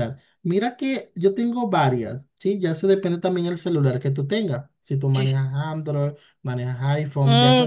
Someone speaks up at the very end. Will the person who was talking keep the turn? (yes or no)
no